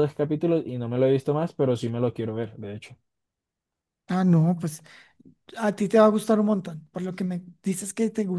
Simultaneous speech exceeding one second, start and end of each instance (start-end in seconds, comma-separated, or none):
none